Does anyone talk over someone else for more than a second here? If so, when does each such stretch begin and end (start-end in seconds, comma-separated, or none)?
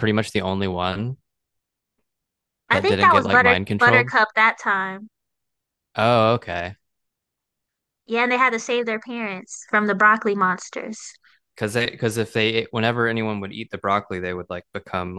2.7-4.1